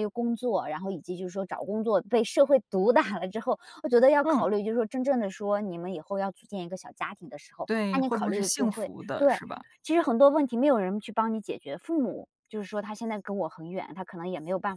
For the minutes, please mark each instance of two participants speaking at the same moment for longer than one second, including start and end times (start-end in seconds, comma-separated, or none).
7.7-9.4